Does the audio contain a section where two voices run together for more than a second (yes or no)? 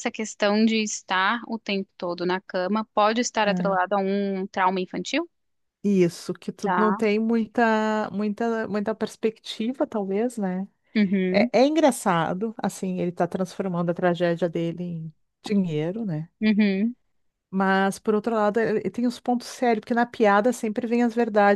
no